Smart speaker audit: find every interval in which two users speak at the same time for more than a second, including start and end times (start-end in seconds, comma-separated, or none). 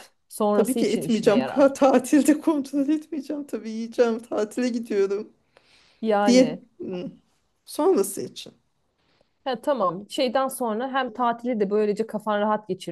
0.5-1.7